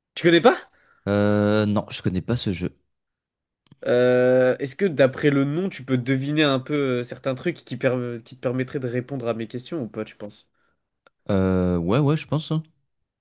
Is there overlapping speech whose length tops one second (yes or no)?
no